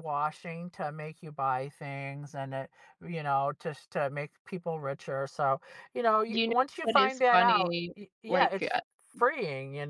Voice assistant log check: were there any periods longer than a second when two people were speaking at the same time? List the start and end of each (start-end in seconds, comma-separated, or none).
6.3-8.8